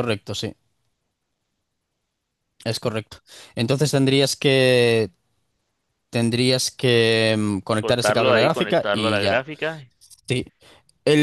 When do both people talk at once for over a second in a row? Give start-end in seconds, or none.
7.6-9.4